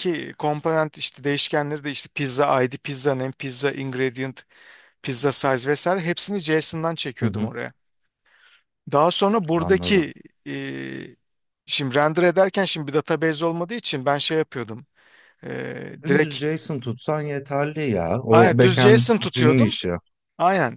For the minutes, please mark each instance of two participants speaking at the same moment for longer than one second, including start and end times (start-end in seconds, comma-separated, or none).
18.3-19.8